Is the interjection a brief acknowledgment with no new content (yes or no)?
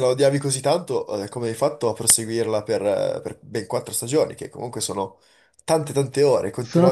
no